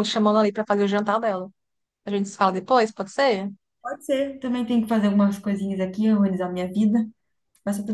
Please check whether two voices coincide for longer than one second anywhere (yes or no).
no